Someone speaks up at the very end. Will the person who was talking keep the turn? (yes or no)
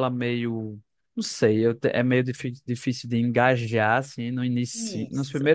yes